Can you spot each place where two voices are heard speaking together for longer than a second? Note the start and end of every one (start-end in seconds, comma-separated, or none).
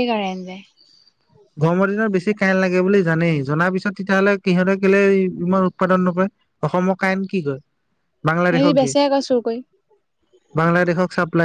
none